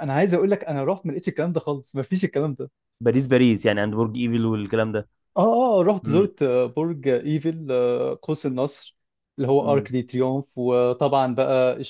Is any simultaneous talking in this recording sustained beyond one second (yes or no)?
no